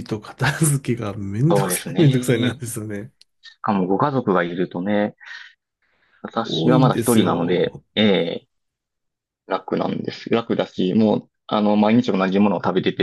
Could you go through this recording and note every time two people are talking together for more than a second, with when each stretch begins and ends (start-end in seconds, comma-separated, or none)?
6.4-7.8